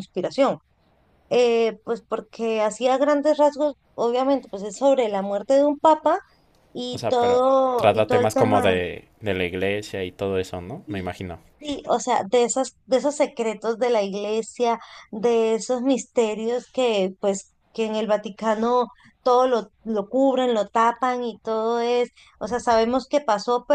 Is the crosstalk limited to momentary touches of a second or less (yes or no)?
no